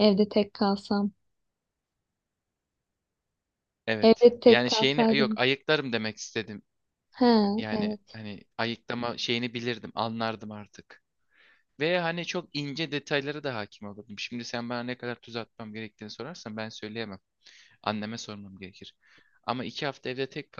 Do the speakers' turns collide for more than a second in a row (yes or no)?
yes